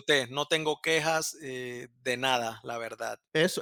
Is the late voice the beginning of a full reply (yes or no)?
yes